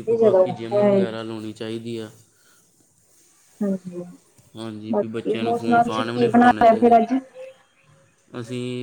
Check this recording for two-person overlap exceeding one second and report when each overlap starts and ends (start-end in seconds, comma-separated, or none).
4.9-7.0